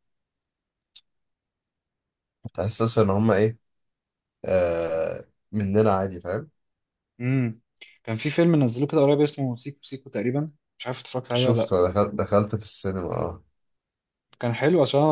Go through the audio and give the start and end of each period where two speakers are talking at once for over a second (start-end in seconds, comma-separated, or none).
none